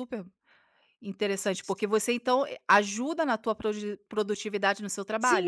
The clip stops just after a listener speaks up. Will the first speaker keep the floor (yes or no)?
no